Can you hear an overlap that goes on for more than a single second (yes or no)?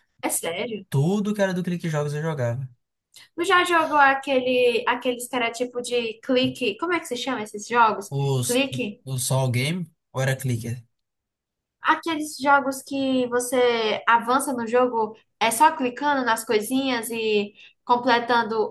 no